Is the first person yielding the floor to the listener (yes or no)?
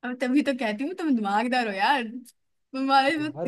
no